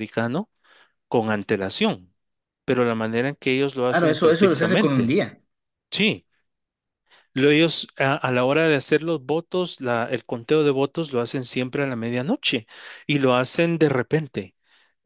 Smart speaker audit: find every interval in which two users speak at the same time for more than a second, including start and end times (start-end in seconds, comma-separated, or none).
3.9-5.2